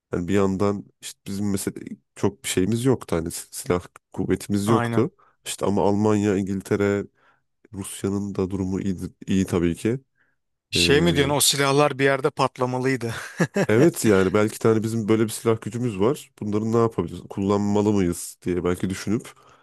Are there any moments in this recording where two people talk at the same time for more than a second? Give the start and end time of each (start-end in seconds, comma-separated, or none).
none